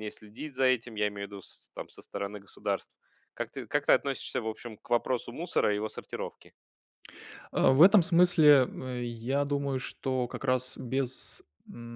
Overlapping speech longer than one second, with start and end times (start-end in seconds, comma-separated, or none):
none